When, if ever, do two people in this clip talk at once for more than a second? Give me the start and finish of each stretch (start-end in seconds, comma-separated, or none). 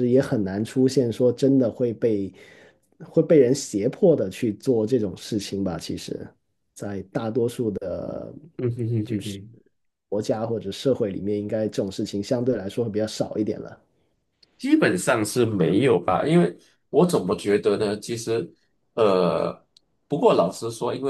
none